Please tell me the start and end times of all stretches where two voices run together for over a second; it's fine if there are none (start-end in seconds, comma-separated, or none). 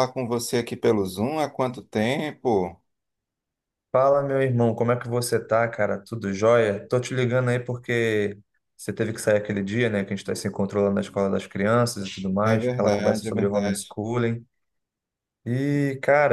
12.4-14.0